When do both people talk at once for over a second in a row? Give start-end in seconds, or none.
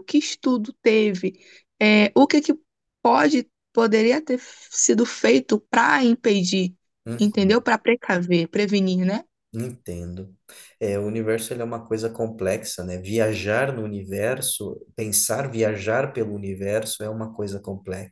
none